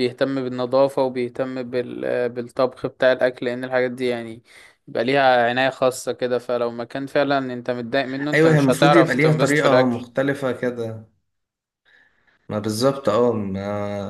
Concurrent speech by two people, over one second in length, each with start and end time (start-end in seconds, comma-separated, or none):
8.3-10.0